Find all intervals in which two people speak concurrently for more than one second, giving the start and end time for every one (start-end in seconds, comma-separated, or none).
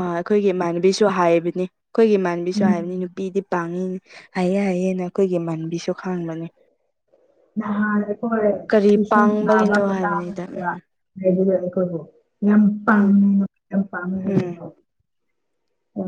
9.0-10.7